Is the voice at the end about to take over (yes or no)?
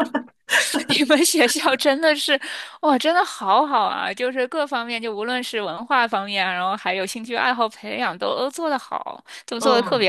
yes